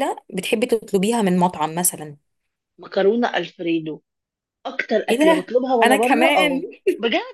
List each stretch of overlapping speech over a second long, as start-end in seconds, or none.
5.1-6.6